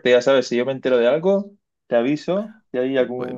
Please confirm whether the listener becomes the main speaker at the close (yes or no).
no